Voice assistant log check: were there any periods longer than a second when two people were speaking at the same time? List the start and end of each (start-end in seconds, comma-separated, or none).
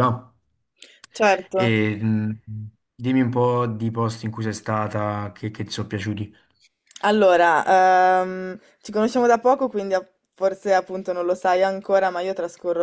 none